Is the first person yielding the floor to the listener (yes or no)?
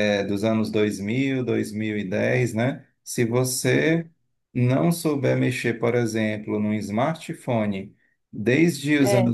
no